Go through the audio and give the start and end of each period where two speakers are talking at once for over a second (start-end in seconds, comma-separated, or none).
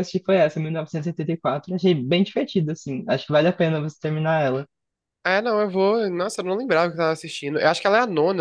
none